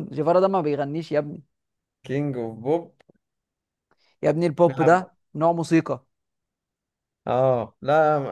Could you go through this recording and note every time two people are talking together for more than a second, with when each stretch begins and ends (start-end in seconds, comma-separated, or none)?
none